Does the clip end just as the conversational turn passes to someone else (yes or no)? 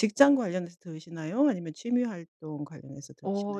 yes